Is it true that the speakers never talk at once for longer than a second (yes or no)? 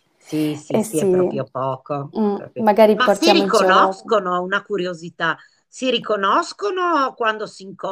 no